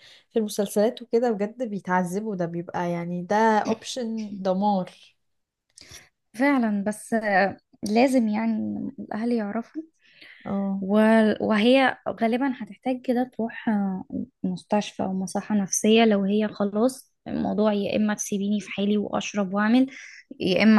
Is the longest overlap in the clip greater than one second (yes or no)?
no